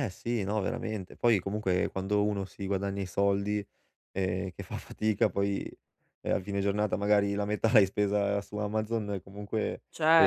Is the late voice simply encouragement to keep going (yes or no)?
yes